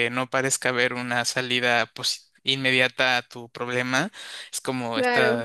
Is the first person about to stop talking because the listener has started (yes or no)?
no